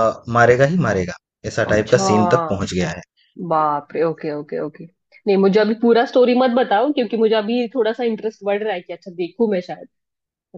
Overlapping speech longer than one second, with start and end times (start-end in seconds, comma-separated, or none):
none